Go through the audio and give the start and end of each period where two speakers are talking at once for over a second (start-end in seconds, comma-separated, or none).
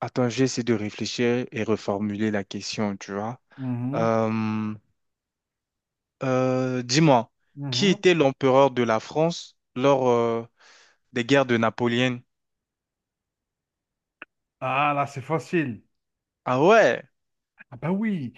none